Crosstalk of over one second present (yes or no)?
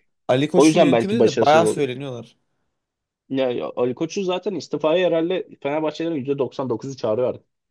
yes